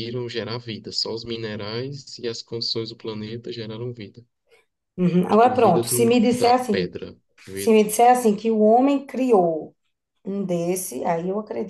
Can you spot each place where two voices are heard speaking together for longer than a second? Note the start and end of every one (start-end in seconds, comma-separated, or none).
5.3-6.9